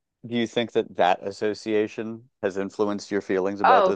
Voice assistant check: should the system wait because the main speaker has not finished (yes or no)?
no